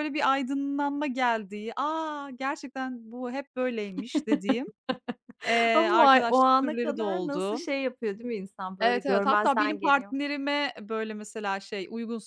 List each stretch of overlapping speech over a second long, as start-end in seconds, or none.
5.7-7.7, 8.8-10.2